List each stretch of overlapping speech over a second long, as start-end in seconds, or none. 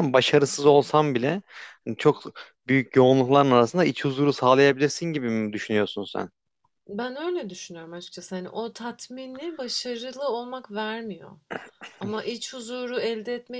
none